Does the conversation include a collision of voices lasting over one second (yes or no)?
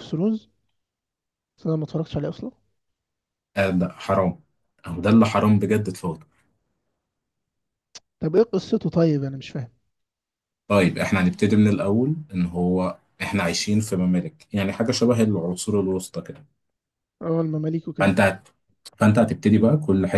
no